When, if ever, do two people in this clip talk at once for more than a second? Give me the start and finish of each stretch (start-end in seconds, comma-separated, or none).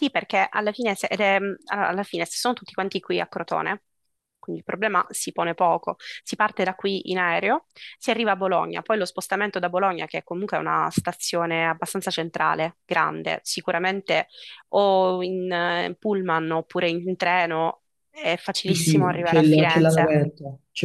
18.6-20.1